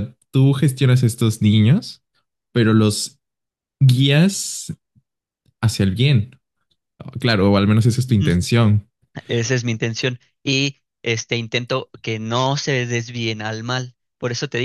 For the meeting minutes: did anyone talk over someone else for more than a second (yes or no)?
no